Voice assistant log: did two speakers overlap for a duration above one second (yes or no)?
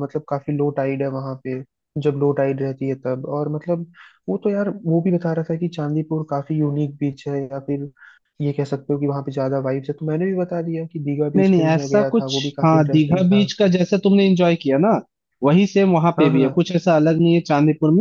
yes